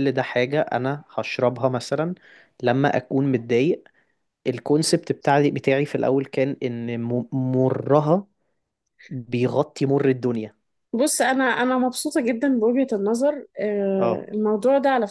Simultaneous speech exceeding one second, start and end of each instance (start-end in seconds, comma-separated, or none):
none